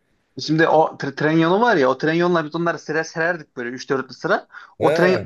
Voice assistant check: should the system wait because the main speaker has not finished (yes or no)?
yes